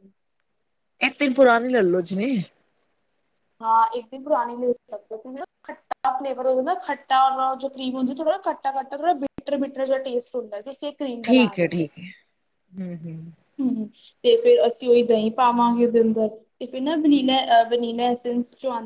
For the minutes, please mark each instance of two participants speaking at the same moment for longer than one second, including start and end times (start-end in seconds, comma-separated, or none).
none